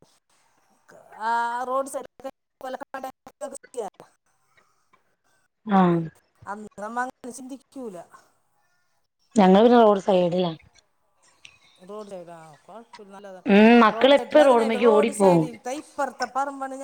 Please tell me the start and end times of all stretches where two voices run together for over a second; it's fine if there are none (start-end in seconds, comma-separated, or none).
13.9-15.4